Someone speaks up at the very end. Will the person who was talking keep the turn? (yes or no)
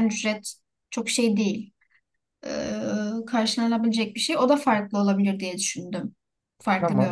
no